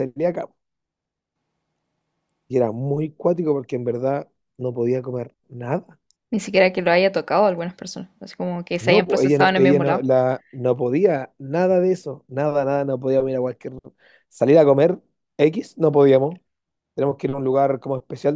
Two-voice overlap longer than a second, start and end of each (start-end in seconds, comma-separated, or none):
8.8-10.1